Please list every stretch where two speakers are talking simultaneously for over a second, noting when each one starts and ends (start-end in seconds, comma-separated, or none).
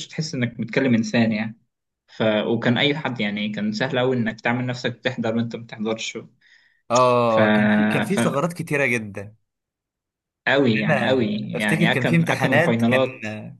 10.7-13.0